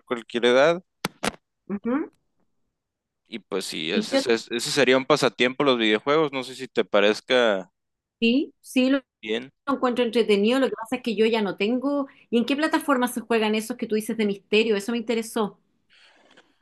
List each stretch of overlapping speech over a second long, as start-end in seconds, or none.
none